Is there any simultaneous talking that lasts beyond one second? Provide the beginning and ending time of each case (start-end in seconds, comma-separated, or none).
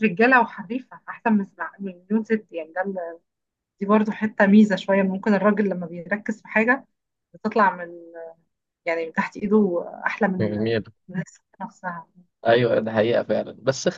none